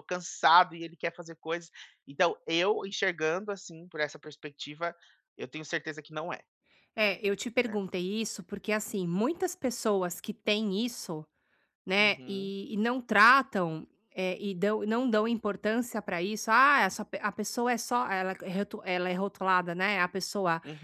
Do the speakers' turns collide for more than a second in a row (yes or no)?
no